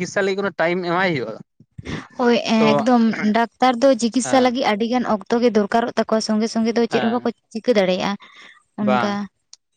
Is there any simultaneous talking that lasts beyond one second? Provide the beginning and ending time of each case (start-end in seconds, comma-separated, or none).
none